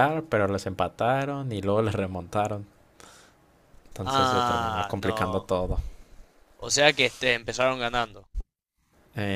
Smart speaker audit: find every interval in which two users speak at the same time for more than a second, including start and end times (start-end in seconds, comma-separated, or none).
4.0-5.5